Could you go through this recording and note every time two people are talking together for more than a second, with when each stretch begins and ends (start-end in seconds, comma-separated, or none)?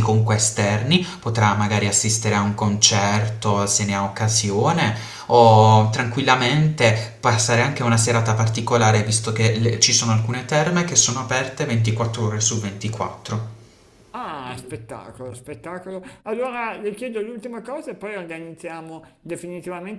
none